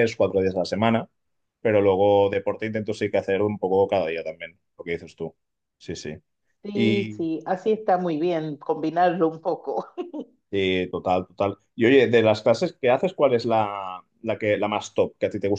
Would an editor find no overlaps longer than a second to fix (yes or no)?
yes